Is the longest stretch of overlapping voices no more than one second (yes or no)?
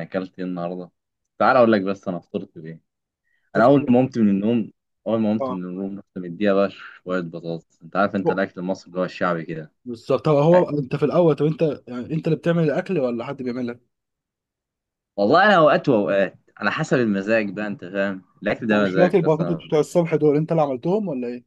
no